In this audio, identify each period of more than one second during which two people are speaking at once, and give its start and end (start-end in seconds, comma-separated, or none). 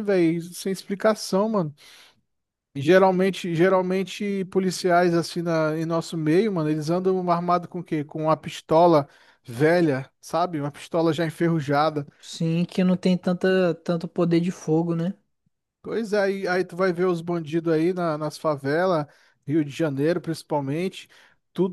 none